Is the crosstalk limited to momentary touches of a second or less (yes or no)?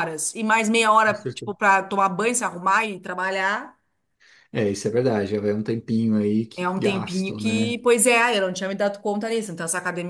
no